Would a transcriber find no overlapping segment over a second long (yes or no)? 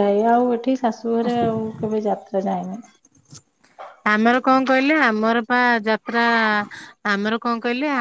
yes